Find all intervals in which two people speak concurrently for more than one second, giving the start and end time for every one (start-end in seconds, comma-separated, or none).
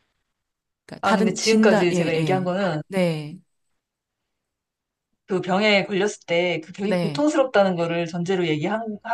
1.0-2.5